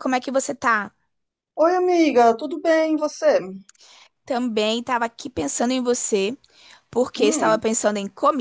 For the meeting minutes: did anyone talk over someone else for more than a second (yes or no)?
no